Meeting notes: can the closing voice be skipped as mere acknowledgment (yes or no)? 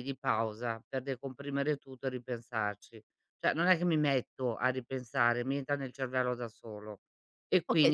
no